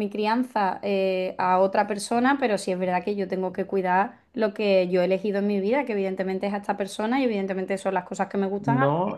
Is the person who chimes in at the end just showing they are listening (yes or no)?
no